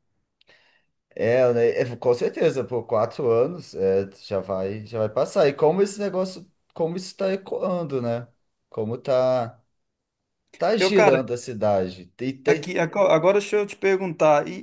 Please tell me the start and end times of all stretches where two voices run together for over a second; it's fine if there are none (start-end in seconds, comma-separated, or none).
none